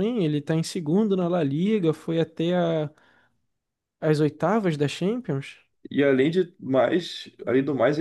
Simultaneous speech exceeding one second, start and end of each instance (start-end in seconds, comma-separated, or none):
none